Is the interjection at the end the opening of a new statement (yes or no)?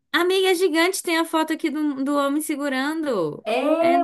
yes